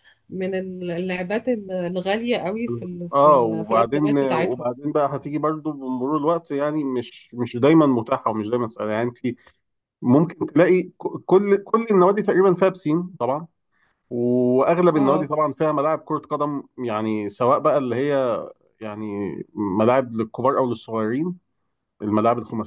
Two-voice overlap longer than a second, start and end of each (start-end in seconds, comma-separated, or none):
3.1-4.7